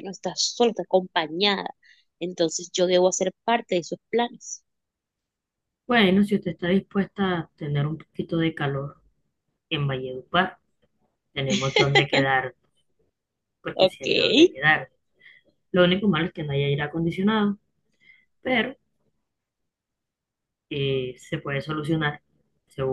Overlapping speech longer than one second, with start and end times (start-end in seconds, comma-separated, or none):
none